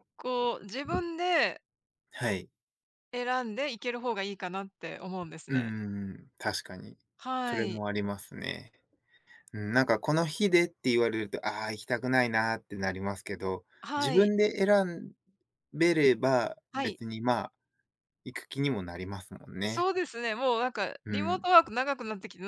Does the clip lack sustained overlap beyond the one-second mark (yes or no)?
yes